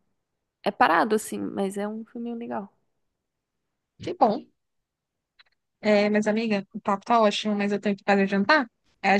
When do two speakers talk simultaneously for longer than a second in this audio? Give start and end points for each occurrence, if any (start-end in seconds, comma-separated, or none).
none